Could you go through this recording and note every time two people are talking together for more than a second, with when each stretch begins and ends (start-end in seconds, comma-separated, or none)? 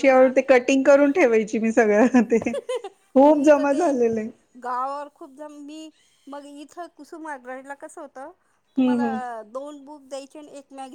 none